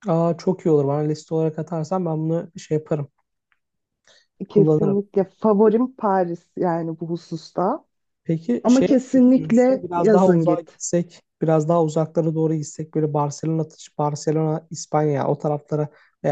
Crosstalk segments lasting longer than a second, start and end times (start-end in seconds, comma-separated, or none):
8.6-10.8